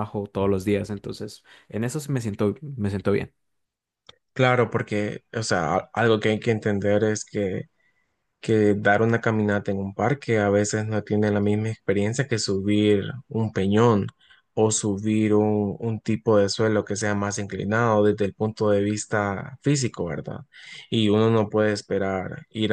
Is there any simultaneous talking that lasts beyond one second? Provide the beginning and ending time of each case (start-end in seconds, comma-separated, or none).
none